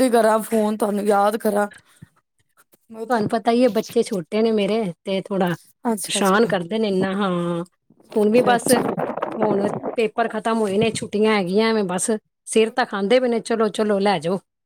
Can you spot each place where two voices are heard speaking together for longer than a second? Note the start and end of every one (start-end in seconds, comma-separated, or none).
none